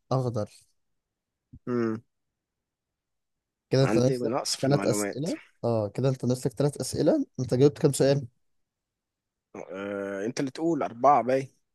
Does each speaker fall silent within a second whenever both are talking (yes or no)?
no